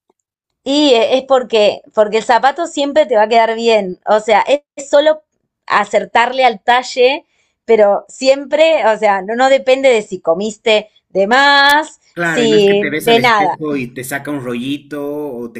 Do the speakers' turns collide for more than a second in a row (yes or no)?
yes